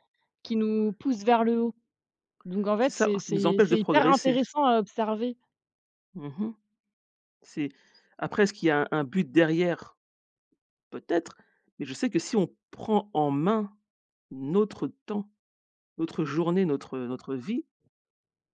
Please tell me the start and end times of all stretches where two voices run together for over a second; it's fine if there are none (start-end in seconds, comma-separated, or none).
2.8-4.4